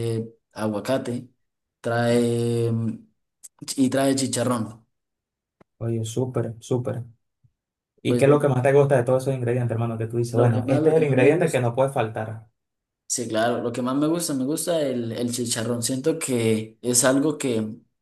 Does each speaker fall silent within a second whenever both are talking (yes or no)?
no